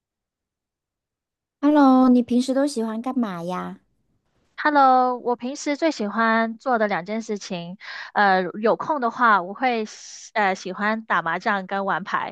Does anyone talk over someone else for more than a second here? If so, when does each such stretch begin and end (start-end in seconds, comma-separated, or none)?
none